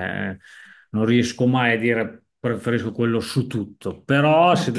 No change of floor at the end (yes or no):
yes